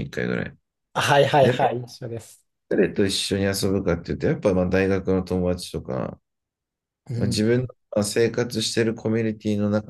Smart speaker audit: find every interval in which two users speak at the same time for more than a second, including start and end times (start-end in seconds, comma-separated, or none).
none